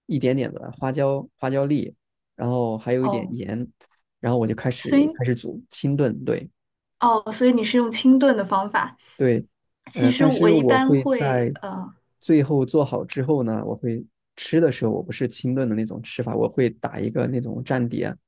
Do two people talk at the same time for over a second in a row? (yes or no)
yes